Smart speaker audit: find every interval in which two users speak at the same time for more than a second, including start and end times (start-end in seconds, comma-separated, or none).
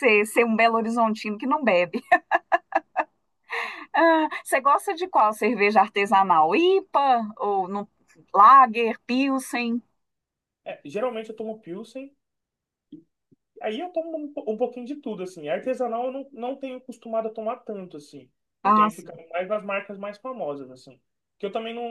none